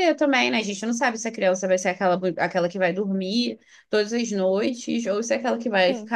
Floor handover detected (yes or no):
no